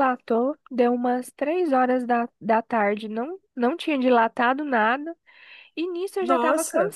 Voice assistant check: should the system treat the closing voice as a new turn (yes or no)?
no